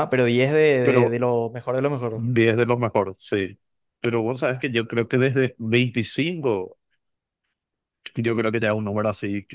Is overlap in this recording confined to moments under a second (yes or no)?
yes